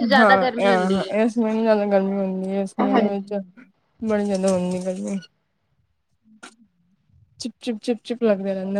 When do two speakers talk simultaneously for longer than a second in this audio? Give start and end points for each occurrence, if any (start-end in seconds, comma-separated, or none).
none